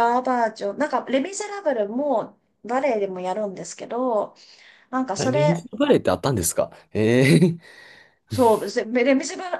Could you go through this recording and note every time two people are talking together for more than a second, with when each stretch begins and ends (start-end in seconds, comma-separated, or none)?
none